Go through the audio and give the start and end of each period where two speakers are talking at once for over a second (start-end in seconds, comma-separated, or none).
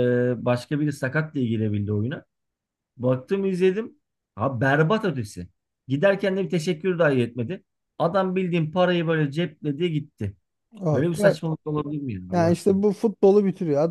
none